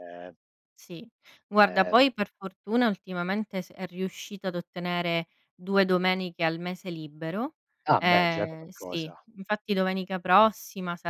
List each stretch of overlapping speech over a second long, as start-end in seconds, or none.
8.0-9.2